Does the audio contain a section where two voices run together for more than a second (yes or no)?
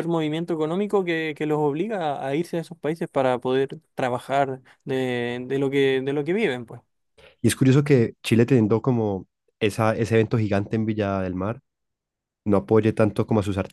no